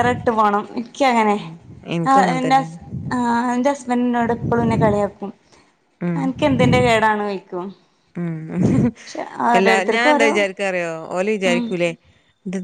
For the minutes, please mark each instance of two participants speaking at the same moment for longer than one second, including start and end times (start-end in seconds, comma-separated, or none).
none